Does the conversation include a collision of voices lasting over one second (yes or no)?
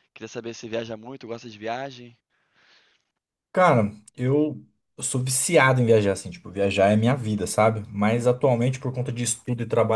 no